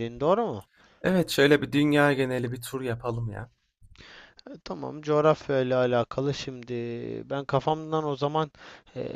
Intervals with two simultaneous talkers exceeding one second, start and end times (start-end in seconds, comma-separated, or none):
none